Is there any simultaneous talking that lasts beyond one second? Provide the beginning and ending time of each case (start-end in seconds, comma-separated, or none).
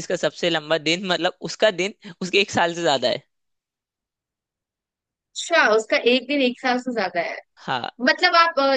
none